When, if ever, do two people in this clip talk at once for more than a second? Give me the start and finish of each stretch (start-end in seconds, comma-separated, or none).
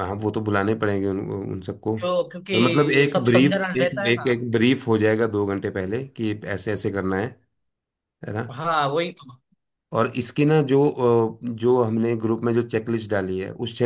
2.5-4.3